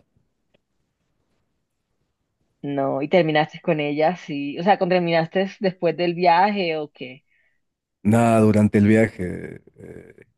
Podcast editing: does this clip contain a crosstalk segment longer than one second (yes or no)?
no